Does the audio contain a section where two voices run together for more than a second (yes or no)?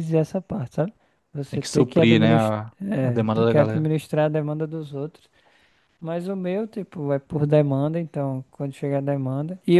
yes